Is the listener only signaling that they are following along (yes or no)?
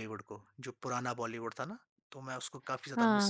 no